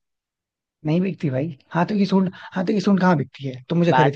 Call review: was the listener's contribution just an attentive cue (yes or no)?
no